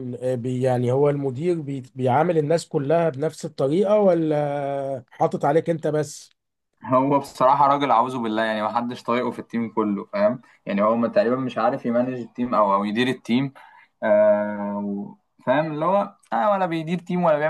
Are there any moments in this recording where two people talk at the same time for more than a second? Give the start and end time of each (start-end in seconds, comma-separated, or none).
none